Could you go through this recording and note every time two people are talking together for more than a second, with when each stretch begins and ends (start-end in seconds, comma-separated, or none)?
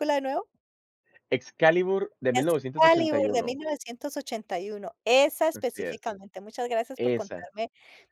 2.3-3.6